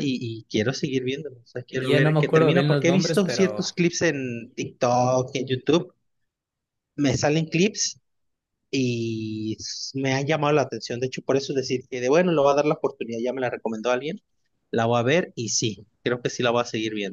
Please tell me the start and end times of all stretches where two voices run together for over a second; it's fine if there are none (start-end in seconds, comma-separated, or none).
1.7-3.7